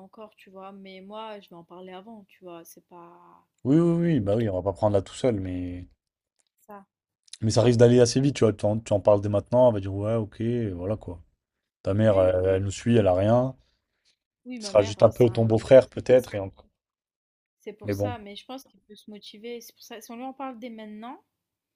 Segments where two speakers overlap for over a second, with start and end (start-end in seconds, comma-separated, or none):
14.6-16.3